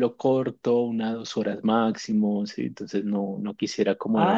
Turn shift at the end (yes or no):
yes